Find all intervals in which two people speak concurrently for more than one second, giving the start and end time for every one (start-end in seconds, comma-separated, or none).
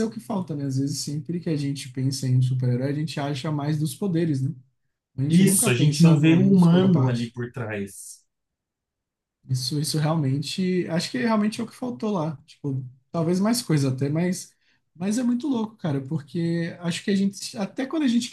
5.3-7.4